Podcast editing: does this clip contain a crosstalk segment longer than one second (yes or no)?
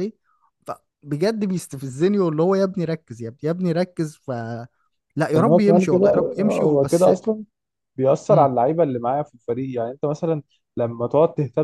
yes